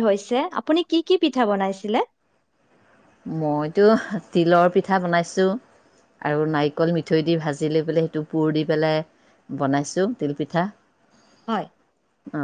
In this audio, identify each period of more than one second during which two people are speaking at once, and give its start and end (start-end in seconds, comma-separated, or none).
none